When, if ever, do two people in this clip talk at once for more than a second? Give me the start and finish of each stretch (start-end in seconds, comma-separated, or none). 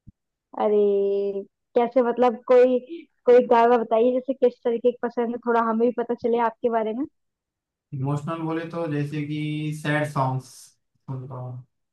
none